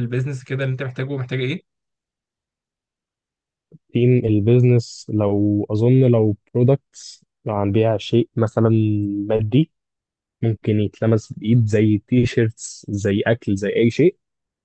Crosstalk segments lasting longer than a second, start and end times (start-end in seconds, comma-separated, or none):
none